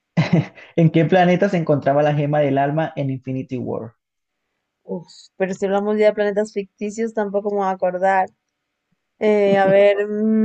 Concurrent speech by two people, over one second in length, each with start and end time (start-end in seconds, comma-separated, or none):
none